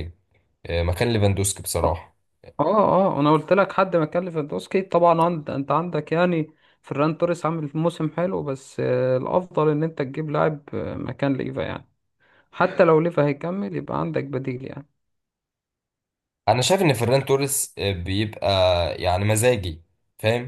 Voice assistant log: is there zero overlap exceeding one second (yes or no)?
yes